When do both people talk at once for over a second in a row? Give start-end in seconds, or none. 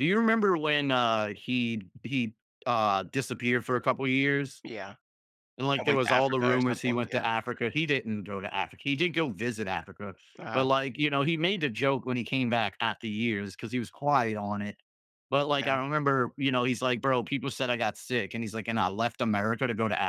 5.8-7.3